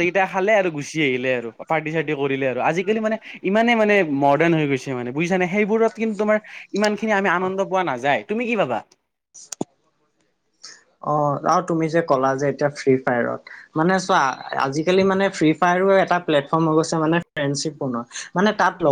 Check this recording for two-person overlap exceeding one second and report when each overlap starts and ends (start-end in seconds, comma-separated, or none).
none